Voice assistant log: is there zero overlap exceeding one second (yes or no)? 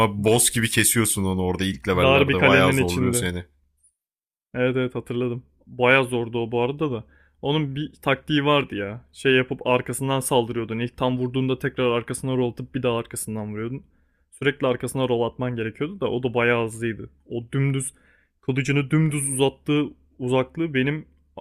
no